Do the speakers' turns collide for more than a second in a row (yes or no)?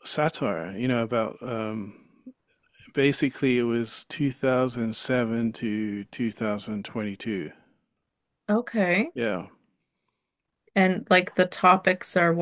no